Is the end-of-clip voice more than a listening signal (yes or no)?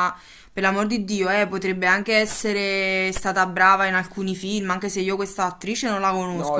yes